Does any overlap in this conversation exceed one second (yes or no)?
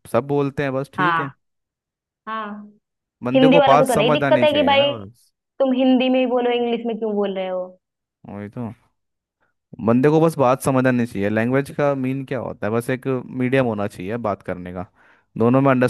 yes